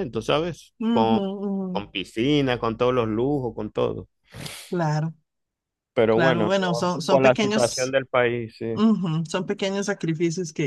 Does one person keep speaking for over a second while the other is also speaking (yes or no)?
yes